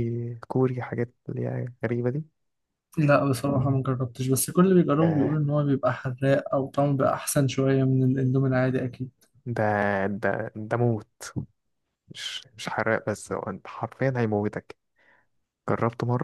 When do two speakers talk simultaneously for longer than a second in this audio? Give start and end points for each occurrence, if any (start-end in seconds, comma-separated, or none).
none